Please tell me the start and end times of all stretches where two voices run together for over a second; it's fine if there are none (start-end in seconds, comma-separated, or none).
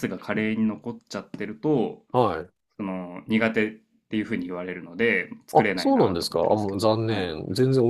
5.5-7.3